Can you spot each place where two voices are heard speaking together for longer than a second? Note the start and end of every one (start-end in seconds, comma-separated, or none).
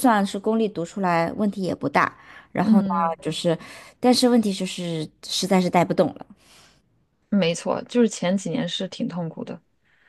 none